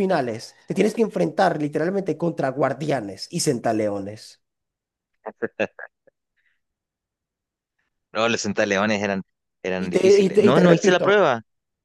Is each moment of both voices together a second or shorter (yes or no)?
no